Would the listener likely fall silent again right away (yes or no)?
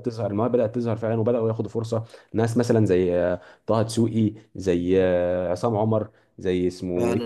no